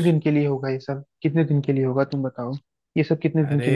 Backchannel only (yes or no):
yes